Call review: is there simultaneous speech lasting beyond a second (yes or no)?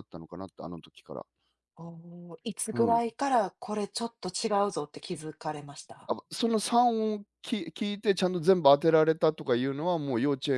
no